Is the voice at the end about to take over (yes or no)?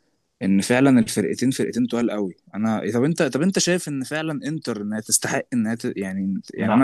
no